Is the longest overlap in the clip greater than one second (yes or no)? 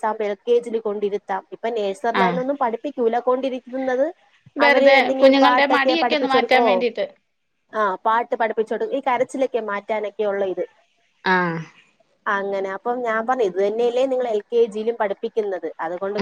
yes